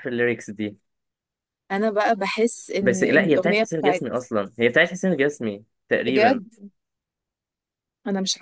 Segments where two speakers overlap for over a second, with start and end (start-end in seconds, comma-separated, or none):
2.8-4.2